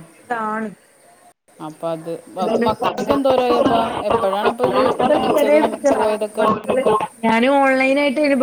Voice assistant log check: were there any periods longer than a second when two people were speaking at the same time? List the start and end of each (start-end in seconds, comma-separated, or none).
none